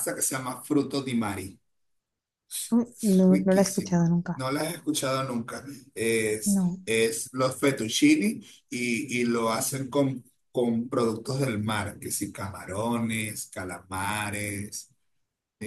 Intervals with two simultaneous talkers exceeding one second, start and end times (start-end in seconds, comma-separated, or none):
2.9-4.4